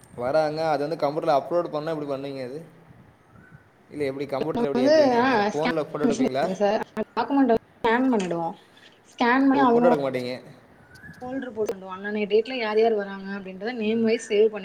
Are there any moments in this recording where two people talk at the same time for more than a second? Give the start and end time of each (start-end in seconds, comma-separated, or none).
none